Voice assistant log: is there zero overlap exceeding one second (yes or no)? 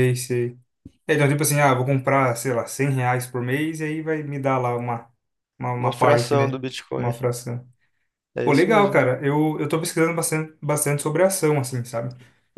no